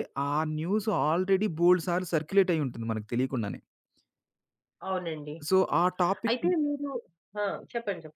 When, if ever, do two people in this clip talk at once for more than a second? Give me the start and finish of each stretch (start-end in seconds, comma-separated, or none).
none